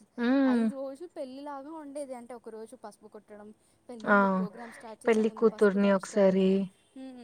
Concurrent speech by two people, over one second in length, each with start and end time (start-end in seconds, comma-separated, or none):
5.1-6.5